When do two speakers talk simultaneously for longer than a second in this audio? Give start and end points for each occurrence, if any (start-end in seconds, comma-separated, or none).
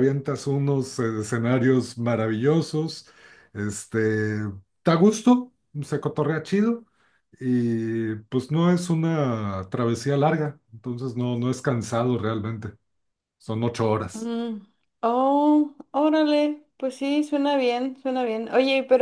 none